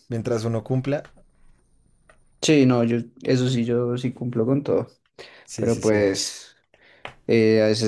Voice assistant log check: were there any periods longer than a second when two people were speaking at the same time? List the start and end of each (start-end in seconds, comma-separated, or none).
none